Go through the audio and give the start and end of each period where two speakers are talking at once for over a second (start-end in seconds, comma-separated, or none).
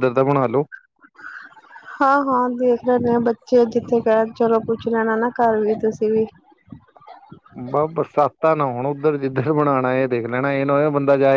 none